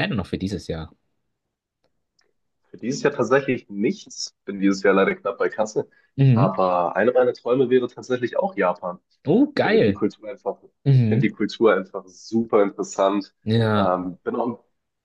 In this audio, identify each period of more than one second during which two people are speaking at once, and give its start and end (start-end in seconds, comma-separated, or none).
none